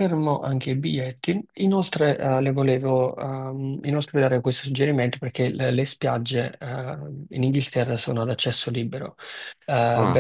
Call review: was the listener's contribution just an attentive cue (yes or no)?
yes